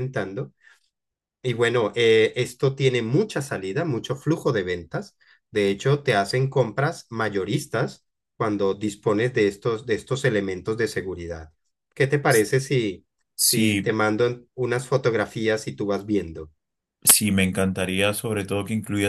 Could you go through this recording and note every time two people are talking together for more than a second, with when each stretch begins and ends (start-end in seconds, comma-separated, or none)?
none